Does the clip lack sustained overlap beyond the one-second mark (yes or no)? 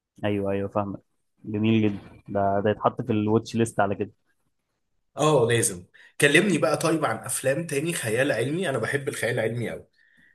yes